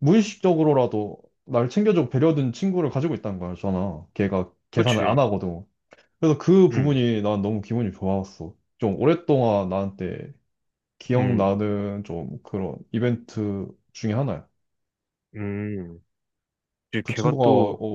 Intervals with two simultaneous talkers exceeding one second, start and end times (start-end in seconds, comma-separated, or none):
none